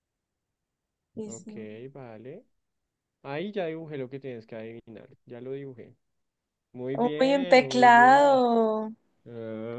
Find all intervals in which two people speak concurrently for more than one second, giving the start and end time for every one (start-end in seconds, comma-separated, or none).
6.9-8.4